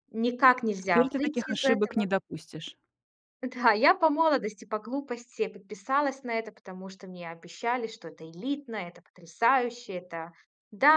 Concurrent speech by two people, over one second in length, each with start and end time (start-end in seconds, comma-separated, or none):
0.8-2.0